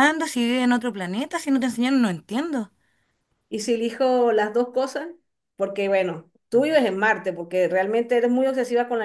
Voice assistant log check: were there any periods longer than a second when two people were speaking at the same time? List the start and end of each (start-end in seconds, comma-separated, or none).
none